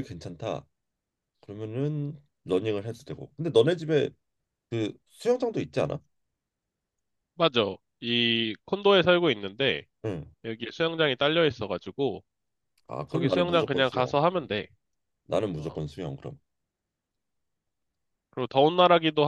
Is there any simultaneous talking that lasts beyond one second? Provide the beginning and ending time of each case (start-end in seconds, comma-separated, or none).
13.1-14.5